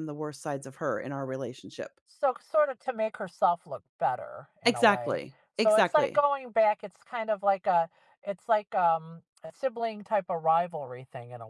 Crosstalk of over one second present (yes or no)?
yes